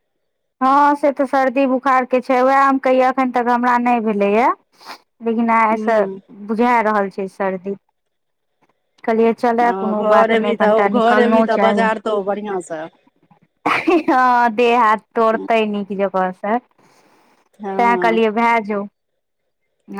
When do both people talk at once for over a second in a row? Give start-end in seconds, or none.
10.0-11.9